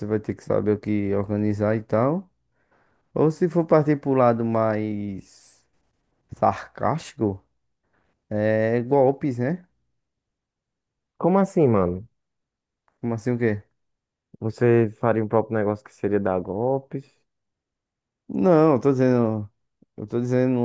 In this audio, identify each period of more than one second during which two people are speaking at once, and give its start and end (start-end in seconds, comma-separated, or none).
none